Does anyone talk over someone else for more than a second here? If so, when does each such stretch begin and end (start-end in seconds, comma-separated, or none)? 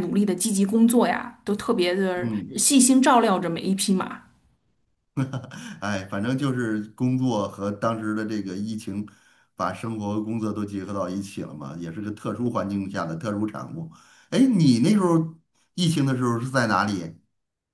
none